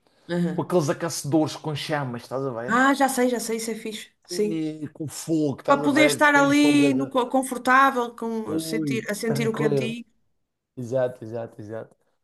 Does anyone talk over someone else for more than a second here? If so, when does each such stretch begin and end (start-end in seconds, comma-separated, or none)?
5.7-7.1, 8.5-9.9